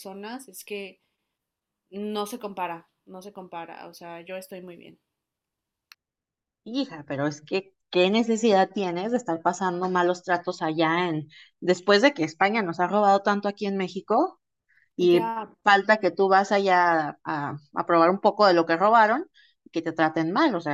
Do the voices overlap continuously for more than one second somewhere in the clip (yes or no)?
no